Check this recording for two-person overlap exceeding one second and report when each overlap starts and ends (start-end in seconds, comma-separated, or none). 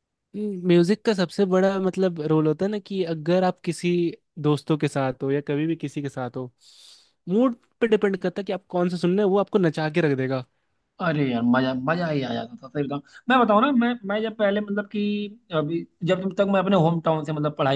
none